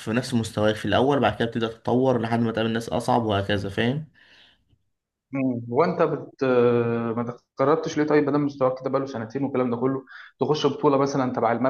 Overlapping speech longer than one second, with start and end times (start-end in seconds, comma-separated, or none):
none